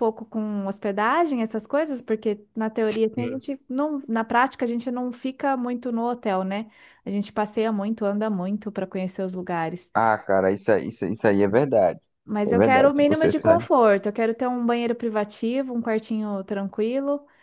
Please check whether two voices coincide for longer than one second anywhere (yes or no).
yes